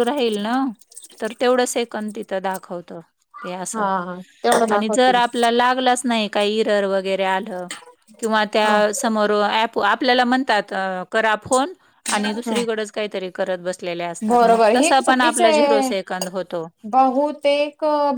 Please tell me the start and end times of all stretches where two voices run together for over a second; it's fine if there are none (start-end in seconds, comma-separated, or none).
14.3-15.9